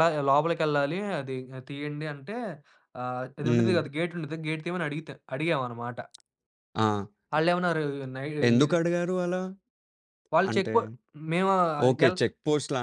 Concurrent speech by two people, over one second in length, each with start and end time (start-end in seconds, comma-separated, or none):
none